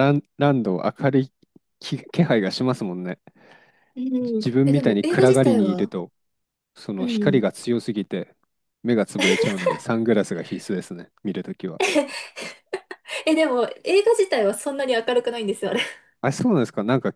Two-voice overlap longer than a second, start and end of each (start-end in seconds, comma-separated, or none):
4.4-5.9